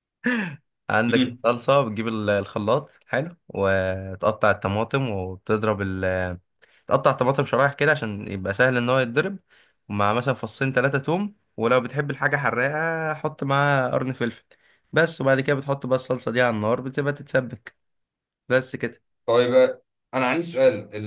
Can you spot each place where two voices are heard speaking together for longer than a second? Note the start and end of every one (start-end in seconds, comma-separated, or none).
none